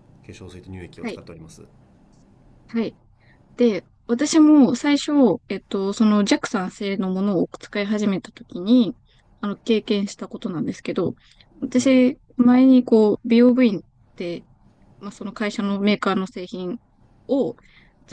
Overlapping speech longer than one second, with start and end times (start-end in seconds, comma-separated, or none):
none